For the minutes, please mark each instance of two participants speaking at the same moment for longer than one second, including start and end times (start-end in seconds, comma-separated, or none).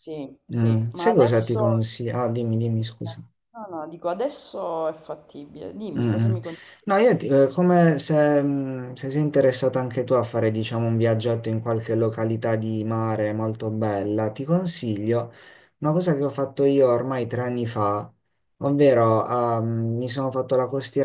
0.5-1.8